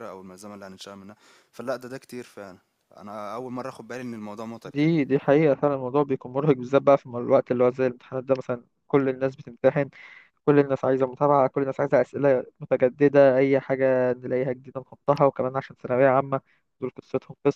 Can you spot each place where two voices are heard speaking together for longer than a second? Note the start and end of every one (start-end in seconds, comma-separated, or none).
none